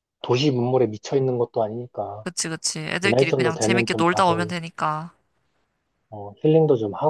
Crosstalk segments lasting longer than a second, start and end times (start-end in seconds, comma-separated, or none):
3.0-4.5